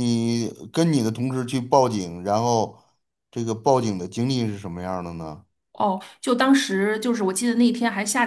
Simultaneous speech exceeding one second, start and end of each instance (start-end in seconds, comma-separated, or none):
none